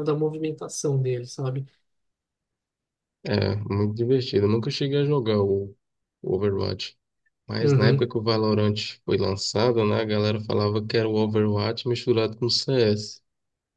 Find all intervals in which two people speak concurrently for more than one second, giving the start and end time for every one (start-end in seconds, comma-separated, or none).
none